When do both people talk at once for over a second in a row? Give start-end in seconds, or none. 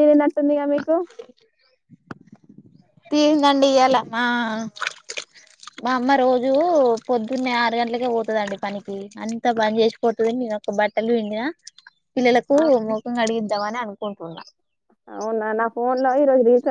none